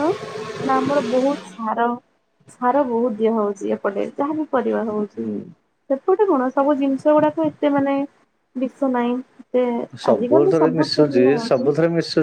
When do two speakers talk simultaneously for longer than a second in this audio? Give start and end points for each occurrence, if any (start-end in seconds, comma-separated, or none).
10.1-11.7